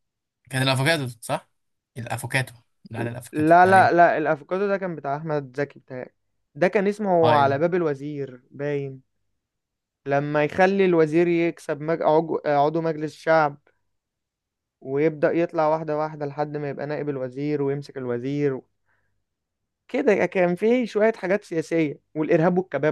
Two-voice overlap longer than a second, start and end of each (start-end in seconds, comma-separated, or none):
none